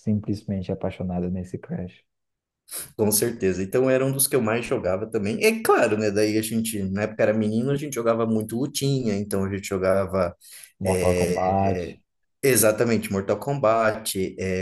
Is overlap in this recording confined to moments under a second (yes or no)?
yes